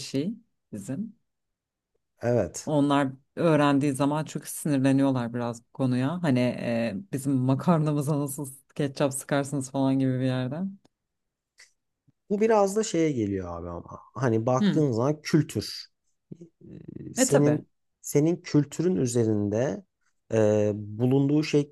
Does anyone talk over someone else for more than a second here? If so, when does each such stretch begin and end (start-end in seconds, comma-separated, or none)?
none